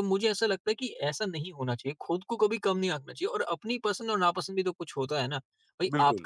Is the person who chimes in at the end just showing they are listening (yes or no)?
yes